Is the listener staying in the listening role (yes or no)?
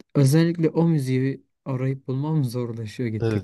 no